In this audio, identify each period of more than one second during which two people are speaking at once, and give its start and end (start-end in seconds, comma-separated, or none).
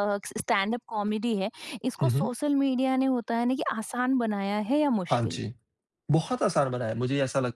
none